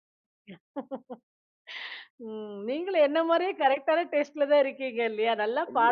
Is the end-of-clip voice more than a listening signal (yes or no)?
yes